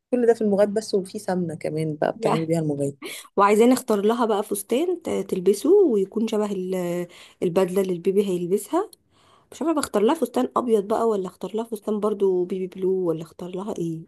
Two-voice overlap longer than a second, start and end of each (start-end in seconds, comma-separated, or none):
none